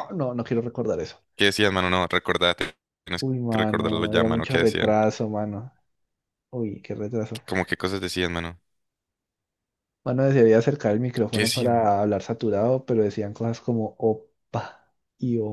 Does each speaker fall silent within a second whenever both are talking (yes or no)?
no